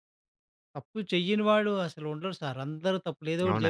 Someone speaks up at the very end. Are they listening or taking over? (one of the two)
taking over